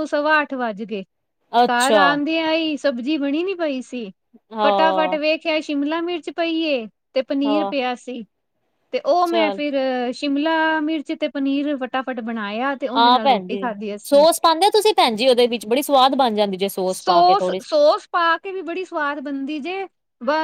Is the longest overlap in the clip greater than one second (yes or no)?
no